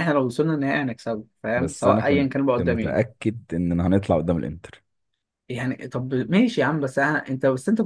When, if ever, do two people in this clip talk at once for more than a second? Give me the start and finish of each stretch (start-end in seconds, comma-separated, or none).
1.6-3.1